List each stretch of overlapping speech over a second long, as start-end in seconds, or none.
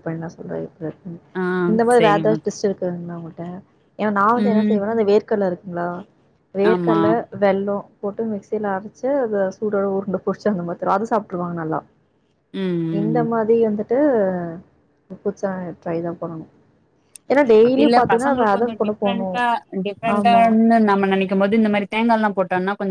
17.7-19.3